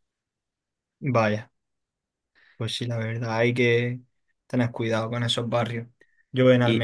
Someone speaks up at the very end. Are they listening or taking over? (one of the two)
listening